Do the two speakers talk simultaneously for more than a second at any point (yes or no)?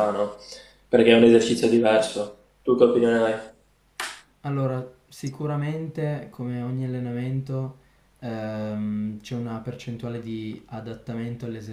no